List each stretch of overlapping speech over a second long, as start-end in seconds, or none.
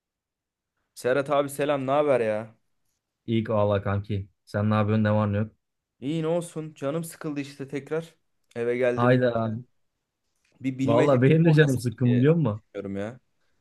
10.8-12.6